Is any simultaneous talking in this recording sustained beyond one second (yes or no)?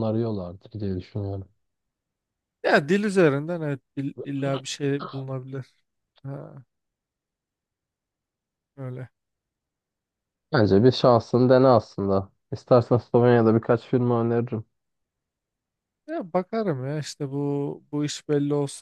no